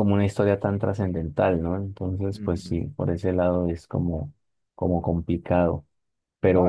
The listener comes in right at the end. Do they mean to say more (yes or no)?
yes